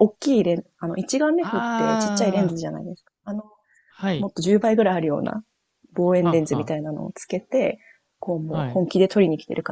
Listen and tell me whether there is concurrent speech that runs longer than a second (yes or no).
yes